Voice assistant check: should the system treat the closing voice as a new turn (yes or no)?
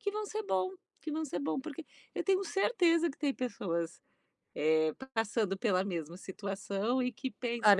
yes